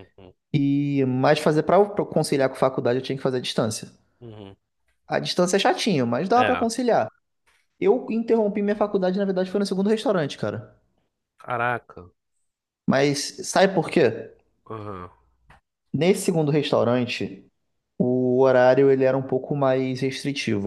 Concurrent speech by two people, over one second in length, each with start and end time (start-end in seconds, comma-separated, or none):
none